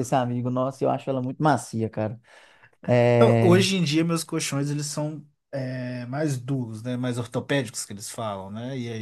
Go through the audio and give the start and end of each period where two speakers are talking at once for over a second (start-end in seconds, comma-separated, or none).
none